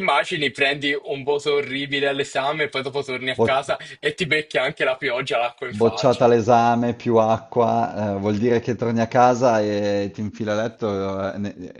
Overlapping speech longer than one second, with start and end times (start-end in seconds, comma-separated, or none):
none